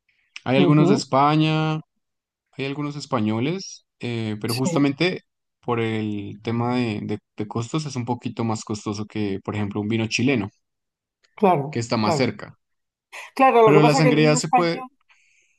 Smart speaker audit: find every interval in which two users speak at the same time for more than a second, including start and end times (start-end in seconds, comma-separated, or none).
13.6-14.8